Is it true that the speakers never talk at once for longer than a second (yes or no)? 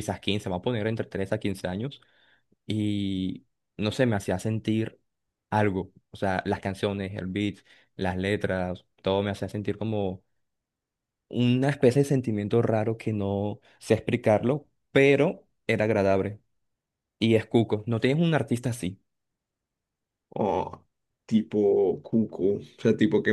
yes